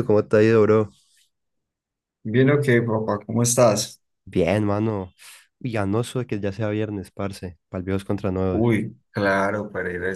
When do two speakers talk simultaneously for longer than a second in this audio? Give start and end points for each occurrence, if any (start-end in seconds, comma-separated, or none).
none